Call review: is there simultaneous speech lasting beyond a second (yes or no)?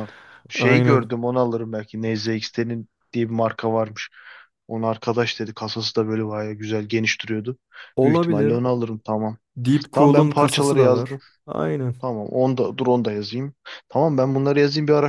yes